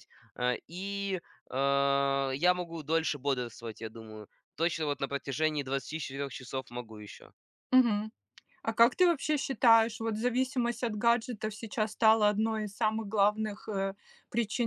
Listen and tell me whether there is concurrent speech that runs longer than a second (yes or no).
no